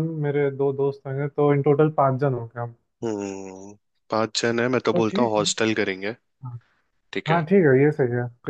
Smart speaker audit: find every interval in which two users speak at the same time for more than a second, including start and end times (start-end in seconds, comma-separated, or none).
none